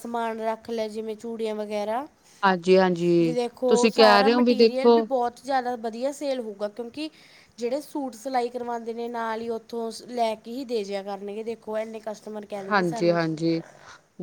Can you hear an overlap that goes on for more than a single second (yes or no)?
yes